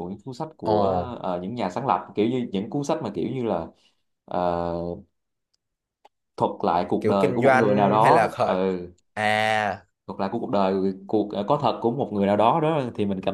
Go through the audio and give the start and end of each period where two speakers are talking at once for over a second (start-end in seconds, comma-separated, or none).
7.0-8.6